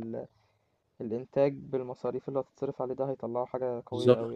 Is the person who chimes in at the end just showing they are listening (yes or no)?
no